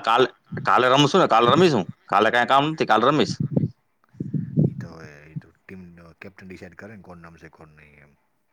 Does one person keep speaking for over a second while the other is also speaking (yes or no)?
no